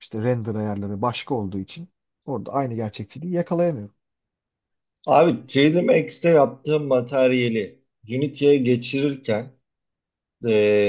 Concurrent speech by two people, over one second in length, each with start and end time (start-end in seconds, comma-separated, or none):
none